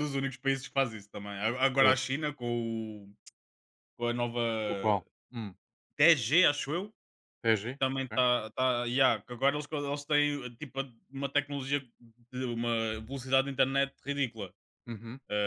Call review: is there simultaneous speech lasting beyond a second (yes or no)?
no